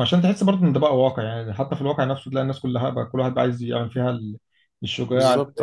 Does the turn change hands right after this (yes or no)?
no